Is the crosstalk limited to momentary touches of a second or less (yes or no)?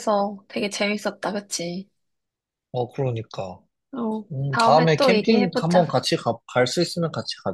no